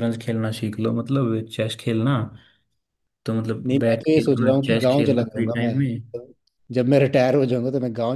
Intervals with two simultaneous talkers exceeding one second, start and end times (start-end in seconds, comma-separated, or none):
3.7-5.7